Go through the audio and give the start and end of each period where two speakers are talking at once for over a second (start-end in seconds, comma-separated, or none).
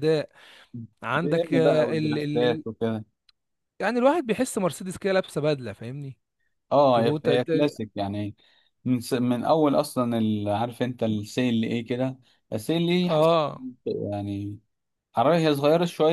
1.2-2.6